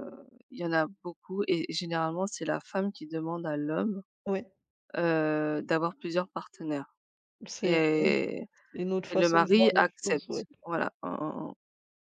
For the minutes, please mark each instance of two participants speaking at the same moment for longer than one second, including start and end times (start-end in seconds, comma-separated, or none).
9.1-10.4